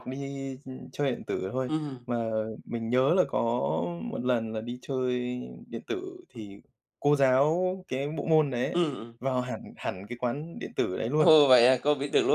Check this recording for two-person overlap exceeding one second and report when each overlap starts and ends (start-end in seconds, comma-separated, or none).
none